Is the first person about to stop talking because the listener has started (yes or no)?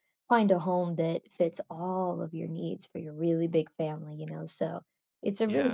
no